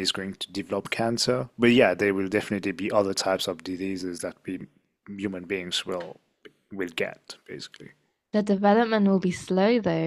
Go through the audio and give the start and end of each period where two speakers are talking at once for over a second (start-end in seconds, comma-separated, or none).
none